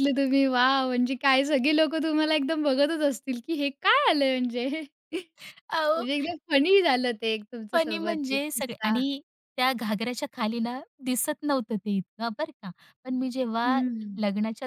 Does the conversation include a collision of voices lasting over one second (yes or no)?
yes